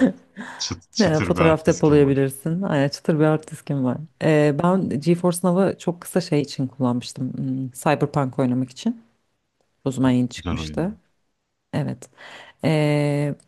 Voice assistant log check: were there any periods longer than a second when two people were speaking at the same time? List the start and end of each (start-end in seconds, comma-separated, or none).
1.0-2.3